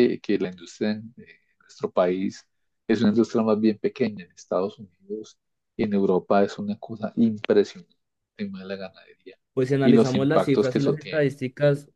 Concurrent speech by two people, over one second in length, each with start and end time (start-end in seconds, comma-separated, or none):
9.8-11.3